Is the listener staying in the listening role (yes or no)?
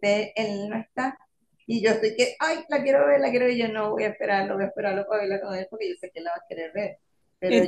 yes